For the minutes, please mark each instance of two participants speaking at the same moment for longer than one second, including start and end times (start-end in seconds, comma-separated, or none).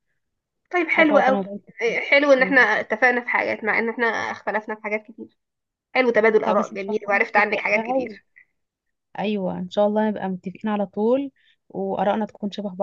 6.5-8.2